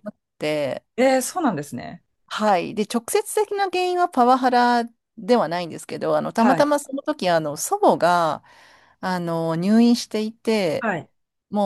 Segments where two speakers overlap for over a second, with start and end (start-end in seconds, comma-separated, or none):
none